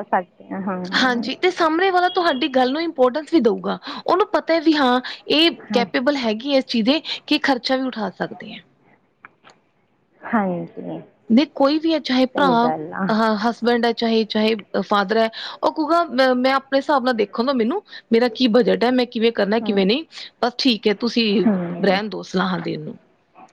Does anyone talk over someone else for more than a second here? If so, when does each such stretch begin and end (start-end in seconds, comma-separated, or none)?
none